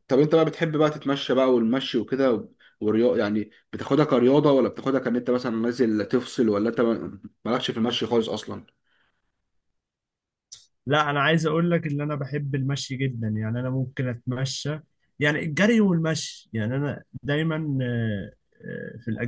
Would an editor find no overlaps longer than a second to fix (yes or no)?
yes